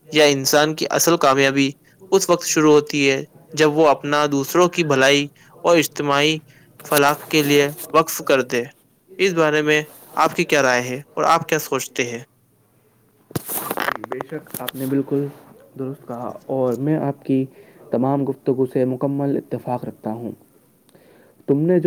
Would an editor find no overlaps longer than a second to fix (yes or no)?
yes